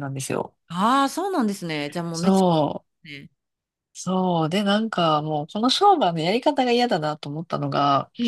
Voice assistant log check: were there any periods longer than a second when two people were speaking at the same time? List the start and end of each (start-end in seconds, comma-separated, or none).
none